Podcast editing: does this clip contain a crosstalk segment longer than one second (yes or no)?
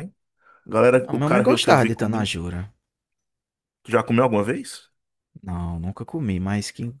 yes